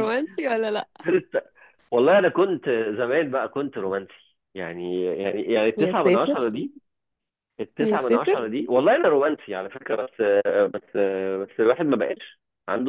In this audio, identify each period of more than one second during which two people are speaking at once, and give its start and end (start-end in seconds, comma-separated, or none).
none